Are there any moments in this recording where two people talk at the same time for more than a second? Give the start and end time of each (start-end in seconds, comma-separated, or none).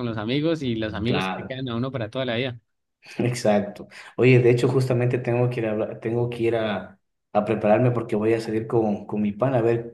none